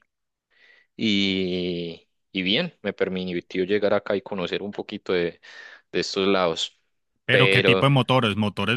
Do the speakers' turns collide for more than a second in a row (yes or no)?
no